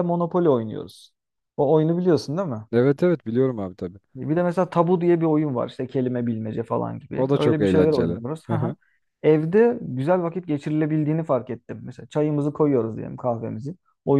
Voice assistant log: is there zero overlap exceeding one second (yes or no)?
no